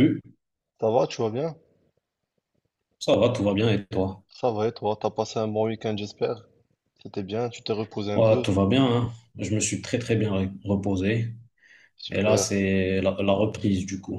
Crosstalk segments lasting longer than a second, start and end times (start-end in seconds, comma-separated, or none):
none